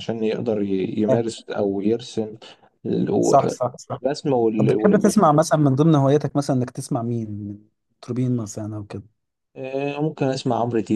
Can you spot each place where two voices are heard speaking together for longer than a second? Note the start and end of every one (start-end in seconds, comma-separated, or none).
none